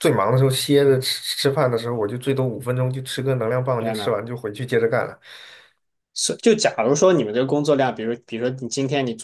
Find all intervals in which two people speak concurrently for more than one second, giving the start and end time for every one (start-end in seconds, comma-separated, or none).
none